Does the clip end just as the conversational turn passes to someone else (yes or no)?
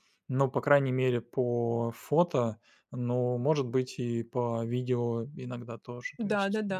no